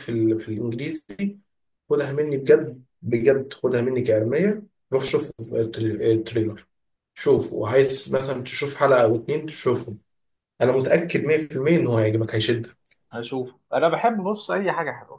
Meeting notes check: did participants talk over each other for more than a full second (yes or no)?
no